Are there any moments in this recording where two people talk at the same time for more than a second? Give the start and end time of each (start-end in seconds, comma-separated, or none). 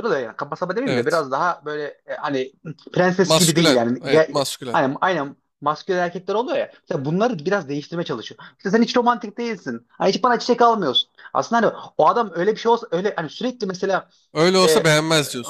3.2-4.8